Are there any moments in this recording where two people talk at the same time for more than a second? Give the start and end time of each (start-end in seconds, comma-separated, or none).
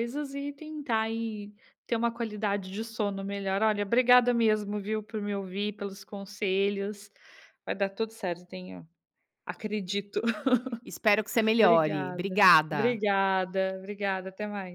11.6-13.0